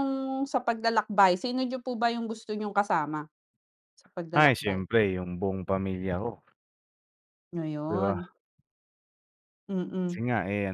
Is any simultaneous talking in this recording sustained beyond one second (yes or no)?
no